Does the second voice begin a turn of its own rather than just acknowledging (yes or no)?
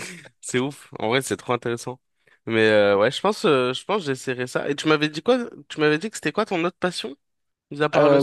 yes